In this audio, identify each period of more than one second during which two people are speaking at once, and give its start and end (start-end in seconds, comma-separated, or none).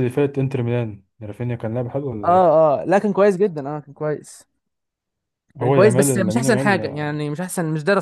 5.6-7.2